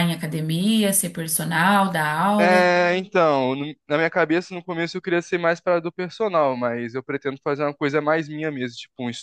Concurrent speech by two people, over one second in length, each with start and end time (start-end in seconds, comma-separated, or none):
none